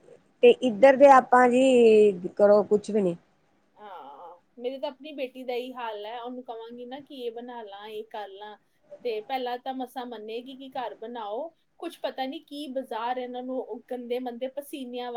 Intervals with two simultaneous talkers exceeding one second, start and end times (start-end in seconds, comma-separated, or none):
none